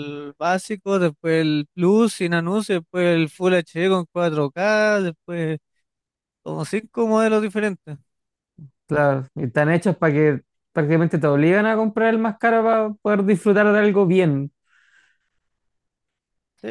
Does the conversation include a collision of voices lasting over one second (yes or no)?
no